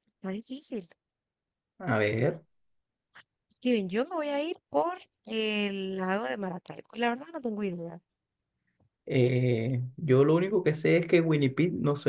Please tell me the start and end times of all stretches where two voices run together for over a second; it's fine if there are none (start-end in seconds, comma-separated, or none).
none